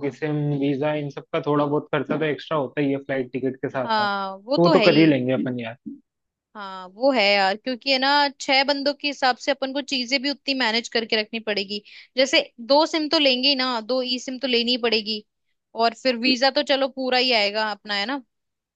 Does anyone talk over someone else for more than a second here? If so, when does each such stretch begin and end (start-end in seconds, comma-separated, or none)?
3.8-5.2